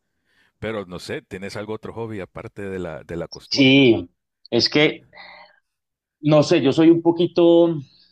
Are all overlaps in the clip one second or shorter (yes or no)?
yes